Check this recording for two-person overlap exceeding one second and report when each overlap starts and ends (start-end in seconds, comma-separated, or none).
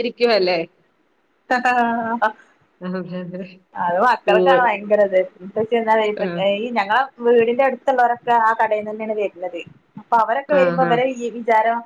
none